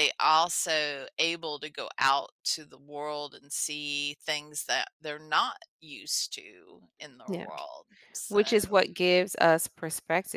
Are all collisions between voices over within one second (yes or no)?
yes